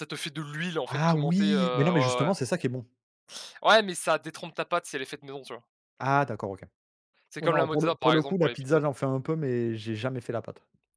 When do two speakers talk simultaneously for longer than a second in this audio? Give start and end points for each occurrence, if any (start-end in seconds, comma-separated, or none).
0.9-2.3, 7.4-8.8